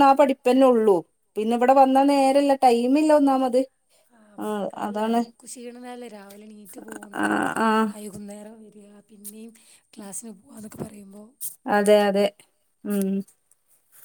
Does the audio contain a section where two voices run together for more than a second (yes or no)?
no